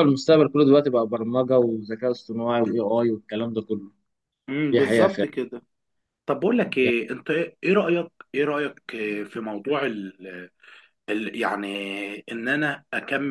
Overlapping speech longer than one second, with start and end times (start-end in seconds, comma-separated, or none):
none